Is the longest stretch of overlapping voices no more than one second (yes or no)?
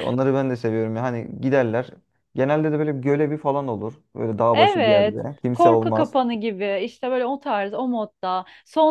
no